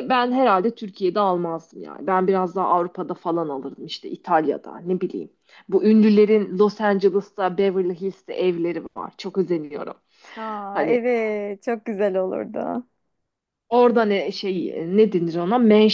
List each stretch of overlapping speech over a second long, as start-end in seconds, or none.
none